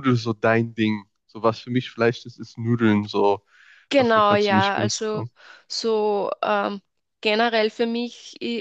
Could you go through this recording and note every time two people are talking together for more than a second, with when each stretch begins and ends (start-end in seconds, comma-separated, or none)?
4.0-5.2